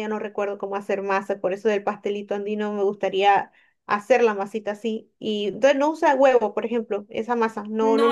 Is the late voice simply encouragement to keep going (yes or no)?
no